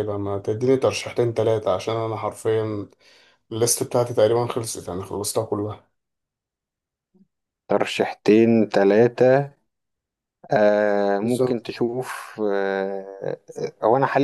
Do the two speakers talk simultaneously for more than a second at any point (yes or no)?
no